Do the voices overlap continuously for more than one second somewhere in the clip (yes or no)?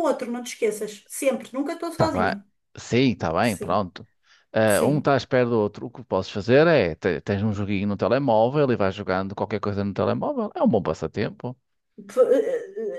no